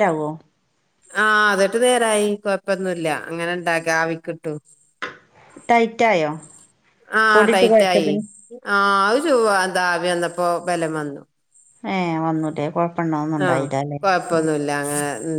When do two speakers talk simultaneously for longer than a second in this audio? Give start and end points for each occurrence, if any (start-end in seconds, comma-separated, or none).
none